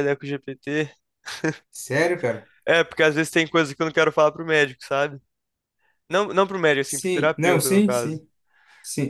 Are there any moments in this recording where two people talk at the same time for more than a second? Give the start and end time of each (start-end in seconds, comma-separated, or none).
6.8-8.2